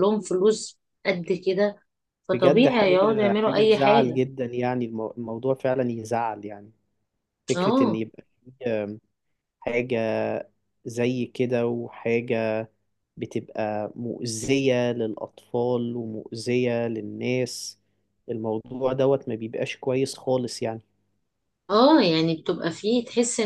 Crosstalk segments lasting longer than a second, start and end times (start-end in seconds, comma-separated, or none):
2.3-4.2